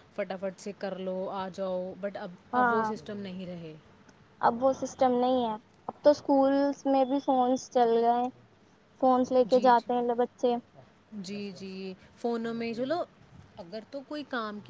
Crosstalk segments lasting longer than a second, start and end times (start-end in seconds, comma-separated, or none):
none